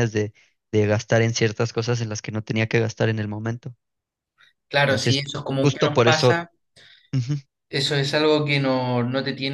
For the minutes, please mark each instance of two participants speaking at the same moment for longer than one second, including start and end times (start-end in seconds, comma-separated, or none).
4.9-6.4